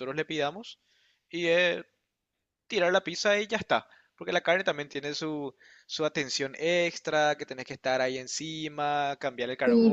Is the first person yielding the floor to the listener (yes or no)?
yes